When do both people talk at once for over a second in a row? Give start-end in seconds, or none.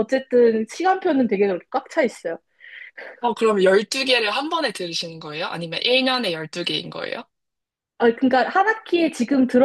none